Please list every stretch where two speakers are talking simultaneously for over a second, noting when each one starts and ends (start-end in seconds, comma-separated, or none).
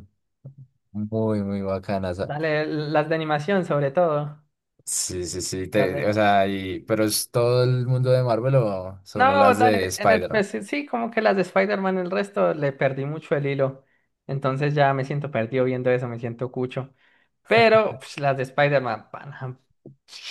9.2-10.4